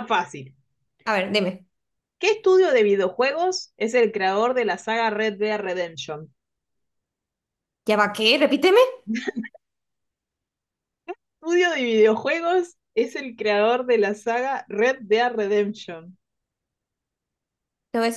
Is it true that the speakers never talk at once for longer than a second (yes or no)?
yes